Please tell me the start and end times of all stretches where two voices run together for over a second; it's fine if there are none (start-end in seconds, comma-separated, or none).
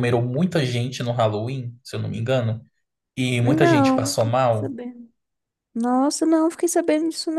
3.4-4.8